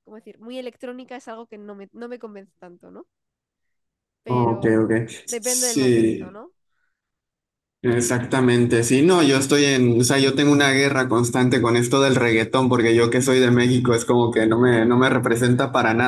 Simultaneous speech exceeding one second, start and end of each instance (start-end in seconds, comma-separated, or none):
4.3-6.4